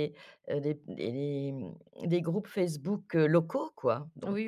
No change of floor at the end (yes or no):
no